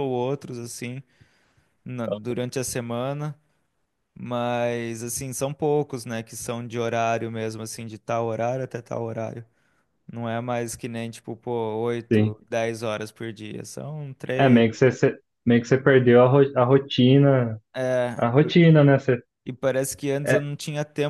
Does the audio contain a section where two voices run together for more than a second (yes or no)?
no